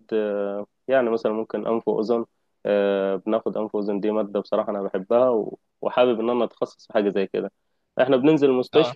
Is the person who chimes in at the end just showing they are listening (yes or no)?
yes